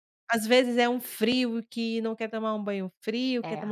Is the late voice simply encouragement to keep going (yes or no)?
yes